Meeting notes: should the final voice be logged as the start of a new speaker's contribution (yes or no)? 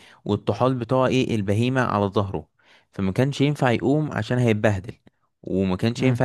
no